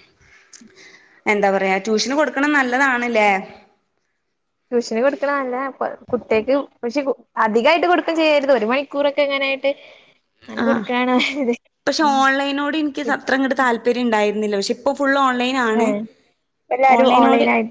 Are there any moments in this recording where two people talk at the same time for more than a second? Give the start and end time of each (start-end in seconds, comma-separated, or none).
none